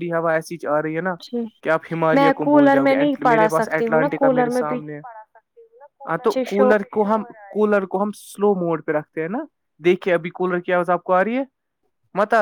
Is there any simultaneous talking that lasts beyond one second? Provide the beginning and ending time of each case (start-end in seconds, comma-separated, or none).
2.2-4.6